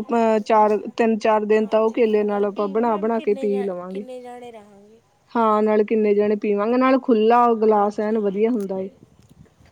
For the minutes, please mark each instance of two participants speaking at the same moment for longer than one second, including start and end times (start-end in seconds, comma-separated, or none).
1.6-4.0